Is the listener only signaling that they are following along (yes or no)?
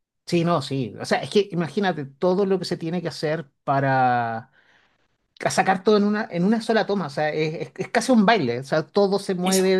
yes